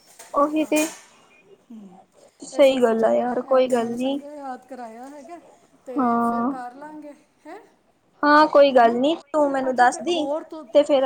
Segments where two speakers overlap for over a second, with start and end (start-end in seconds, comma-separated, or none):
2.6-4.2